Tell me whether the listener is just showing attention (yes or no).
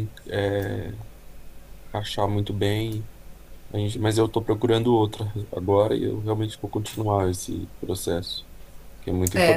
no